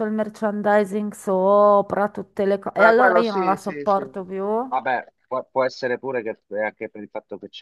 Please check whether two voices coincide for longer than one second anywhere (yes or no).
yes